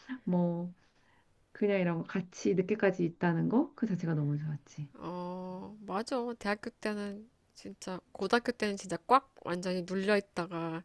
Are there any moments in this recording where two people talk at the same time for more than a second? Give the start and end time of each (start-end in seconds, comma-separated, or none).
none